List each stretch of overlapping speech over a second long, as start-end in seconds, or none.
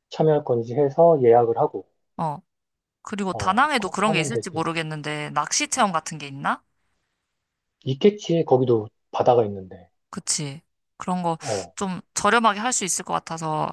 3.3-4.6